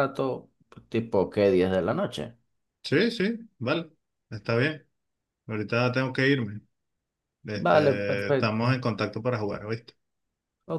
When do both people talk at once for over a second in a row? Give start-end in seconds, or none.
7.5-8.8